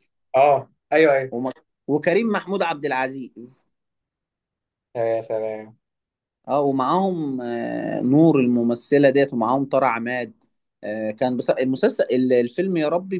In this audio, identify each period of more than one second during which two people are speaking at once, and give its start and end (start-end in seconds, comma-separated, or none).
none